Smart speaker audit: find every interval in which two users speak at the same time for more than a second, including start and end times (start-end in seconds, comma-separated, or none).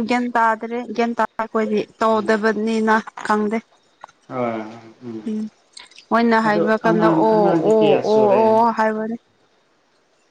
6.4-8.5